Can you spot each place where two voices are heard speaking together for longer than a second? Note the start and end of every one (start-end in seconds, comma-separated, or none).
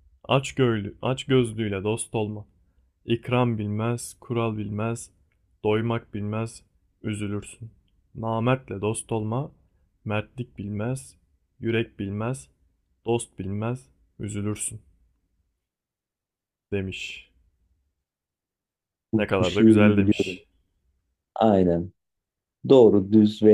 19.1-20.4